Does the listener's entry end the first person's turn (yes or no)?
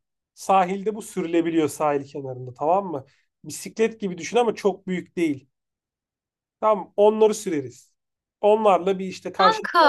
no